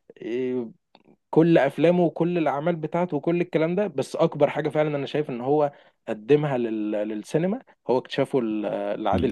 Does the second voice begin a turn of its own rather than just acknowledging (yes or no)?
yes